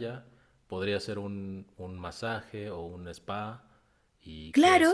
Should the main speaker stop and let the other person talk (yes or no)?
no